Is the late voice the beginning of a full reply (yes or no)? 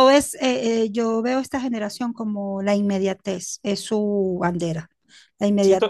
no